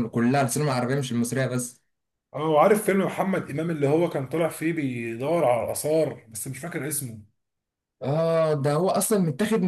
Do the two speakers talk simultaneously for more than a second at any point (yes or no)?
no